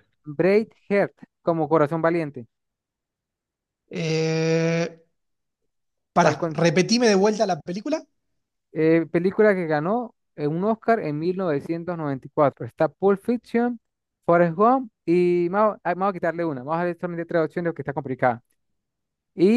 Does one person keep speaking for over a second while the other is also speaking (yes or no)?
no